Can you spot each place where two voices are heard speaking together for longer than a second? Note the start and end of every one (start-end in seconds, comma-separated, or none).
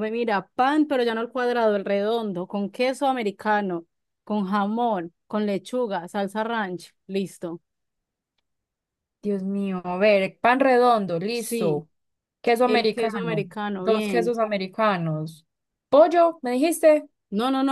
12.7-14.3